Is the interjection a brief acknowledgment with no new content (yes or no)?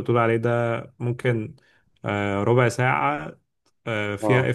yes